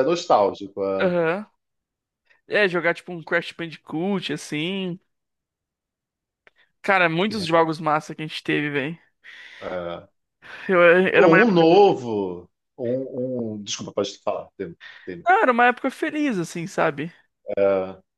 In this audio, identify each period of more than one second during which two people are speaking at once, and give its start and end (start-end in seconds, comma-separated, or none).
none